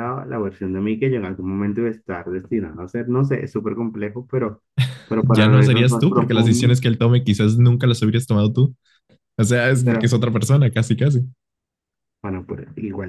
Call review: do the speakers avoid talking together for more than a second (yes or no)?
no